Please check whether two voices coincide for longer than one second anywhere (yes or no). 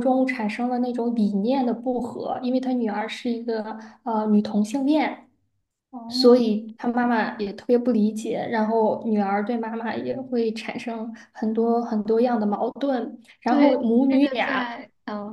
yes